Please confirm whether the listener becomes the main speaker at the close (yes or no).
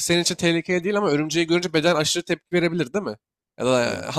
no